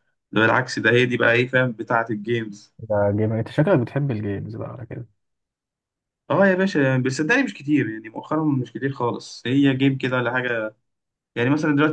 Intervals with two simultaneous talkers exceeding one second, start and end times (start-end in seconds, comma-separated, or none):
none